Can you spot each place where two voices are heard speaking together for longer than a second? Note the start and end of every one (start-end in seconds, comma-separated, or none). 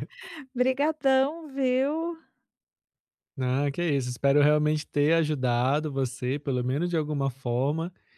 none